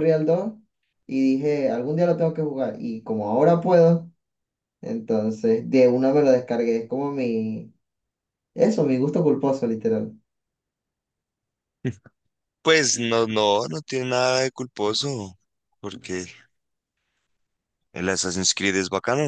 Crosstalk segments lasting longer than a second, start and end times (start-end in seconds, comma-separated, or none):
none